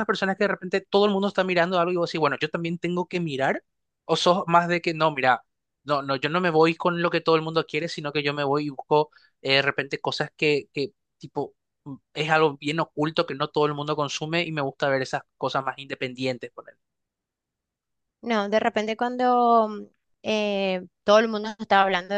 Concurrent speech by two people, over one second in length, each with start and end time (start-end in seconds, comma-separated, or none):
none